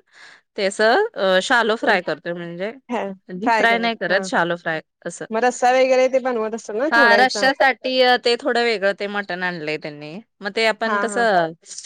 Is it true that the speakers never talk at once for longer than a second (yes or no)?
yes